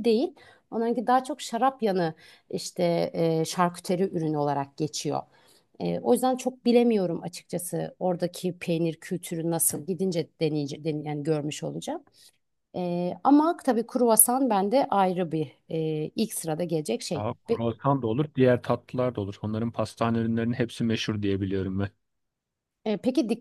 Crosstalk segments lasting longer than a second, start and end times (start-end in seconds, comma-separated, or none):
none